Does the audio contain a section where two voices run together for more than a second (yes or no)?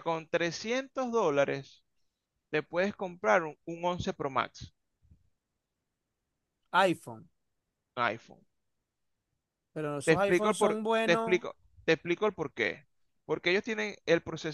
yes